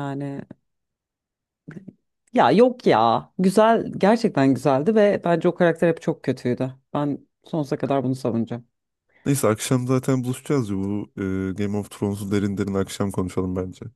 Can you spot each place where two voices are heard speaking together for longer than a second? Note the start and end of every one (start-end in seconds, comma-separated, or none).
none